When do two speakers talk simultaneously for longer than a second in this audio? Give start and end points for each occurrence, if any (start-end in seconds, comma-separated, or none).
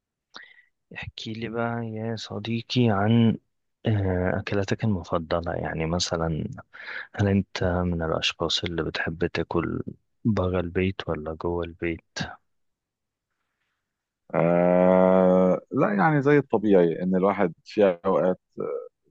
none